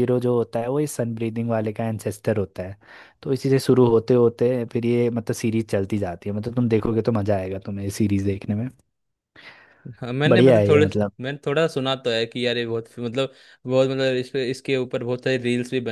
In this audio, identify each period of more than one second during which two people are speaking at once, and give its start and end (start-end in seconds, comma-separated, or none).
none